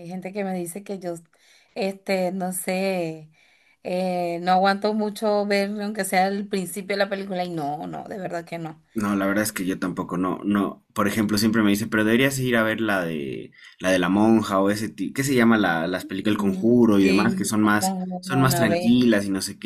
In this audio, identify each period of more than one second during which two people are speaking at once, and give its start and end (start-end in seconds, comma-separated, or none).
16.3-18.9